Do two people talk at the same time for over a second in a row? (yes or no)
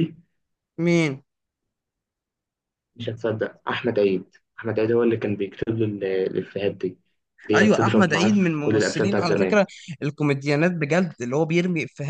yes